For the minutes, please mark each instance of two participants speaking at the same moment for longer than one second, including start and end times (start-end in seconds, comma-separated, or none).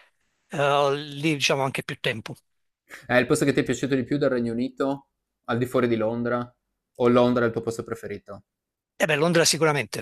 none